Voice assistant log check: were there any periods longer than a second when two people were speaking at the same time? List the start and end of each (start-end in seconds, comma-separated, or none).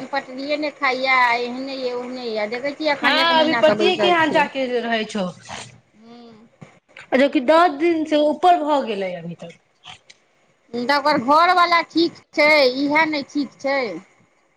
none